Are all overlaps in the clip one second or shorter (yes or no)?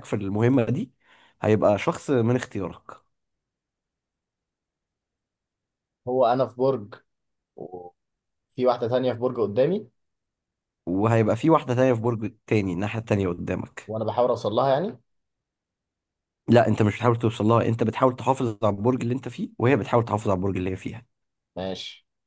yes